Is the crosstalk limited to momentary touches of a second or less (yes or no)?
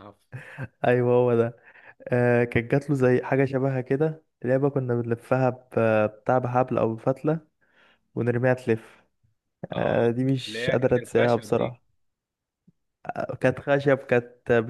no